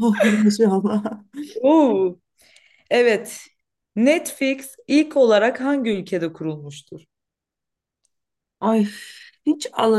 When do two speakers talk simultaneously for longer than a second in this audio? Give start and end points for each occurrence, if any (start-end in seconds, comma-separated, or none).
none